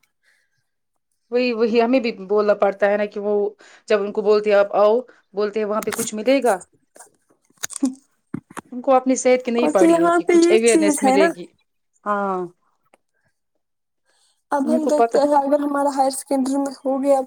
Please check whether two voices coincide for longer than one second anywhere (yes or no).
yes